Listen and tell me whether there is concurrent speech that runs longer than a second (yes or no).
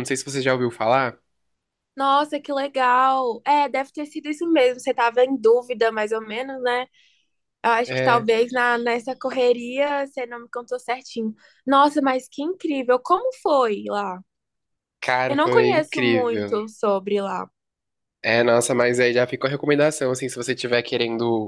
yes